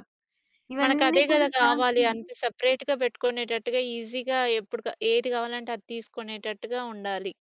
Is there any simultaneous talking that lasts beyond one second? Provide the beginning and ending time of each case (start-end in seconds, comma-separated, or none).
0.8-2.2